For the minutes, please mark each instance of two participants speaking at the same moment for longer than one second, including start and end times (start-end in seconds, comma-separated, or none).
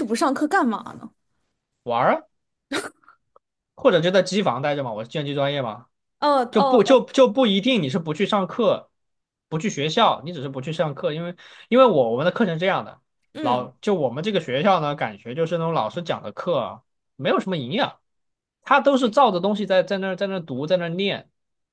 none